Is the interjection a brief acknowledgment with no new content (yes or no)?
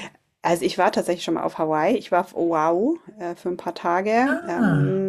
yes